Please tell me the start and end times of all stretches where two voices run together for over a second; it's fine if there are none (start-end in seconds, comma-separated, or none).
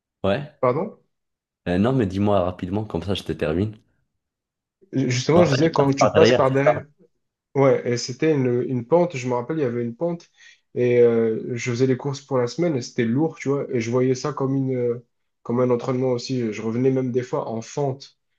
5.3-6.8